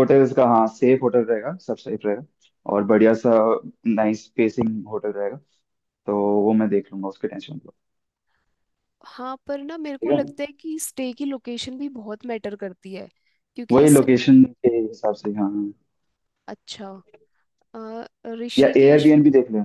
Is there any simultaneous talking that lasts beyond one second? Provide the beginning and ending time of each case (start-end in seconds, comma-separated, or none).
none